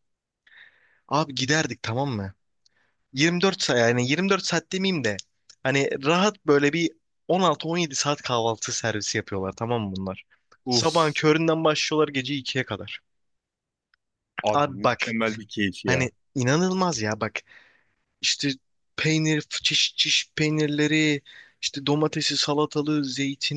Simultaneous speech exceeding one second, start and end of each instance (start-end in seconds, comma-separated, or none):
none